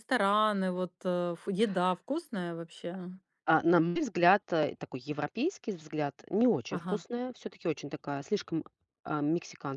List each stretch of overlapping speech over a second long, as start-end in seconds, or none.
none